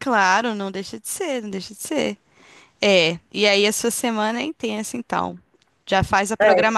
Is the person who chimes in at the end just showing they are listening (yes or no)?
yes